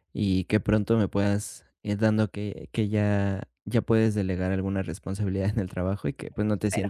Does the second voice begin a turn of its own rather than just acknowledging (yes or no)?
no